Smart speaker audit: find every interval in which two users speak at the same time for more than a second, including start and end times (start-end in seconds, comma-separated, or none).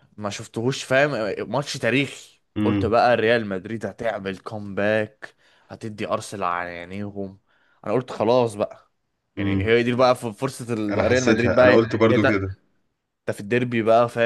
10.9-12.2